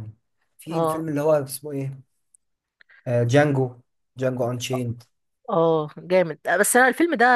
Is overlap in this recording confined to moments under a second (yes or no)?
yes